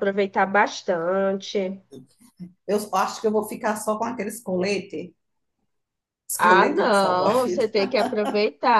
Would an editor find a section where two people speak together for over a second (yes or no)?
yes